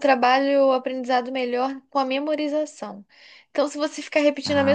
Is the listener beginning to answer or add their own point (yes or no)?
no